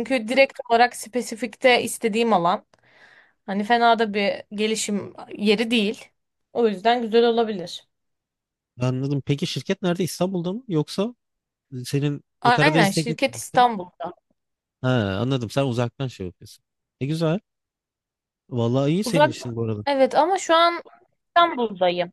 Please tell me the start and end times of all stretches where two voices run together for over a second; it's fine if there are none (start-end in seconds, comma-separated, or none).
12.4-13.7